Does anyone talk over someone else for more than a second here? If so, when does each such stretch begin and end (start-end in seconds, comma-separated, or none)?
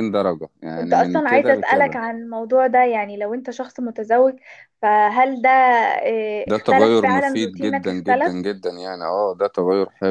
0.8-2.0, 6.5-8.4